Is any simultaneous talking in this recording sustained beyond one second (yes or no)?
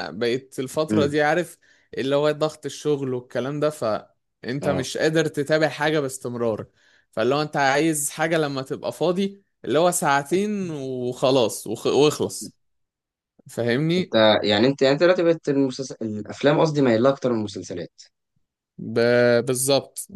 no